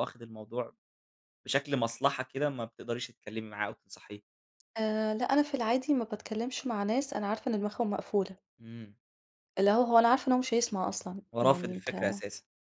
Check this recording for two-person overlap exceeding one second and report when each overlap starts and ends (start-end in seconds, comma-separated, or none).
none